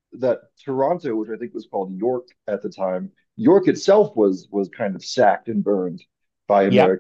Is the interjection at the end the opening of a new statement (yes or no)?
yes